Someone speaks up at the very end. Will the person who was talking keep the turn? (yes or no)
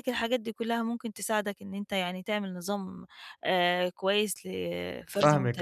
no